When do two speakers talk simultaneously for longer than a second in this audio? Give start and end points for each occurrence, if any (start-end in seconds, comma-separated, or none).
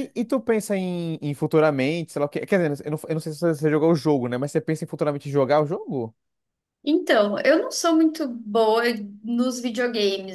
none